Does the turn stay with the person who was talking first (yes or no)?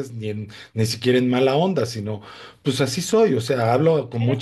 no